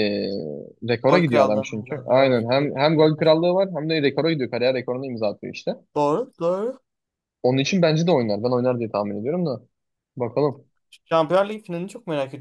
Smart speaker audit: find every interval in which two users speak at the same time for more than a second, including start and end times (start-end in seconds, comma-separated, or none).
1.1-3.1